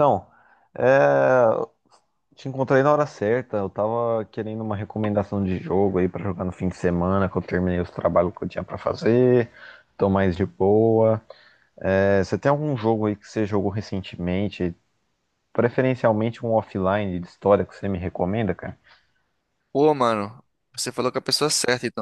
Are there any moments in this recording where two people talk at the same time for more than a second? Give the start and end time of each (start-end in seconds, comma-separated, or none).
none